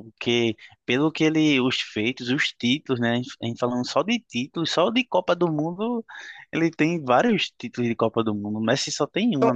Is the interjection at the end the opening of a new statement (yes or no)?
yes